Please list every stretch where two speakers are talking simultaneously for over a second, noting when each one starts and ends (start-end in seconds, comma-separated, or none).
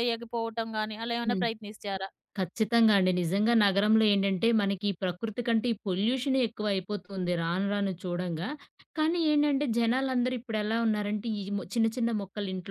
none